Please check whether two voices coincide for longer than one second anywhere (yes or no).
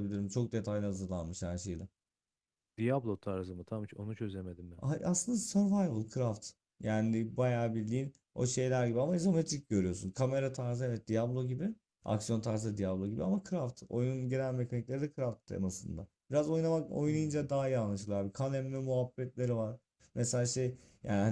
no